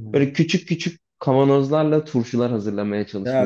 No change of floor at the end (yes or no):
no